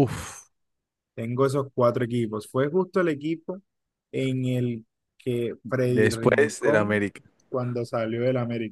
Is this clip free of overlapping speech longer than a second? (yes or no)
no